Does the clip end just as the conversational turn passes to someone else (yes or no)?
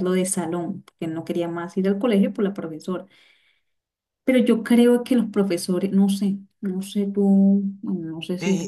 yes